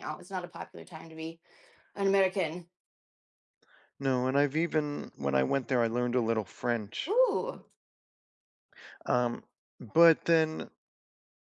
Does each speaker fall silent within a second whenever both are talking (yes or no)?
yes